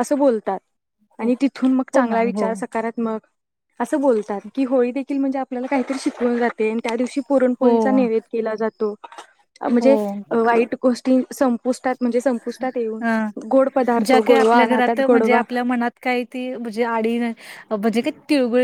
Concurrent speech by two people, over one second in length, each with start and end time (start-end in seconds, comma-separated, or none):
14.1-15.4